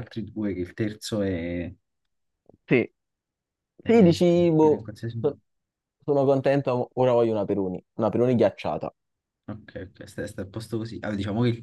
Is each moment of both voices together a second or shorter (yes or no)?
no